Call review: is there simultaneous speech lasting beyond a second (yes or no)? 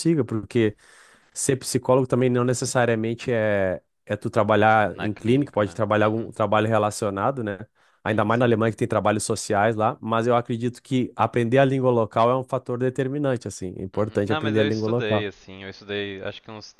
yes